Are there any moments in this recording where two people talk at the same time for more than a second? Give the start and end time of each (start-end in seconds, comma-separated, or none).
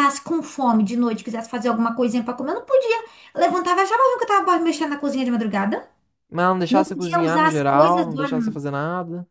6.7-8.3